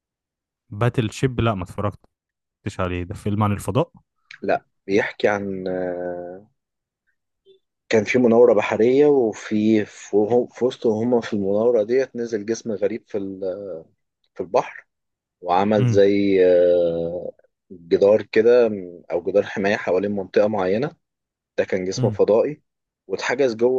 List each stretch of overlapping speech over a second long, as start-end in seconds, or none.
none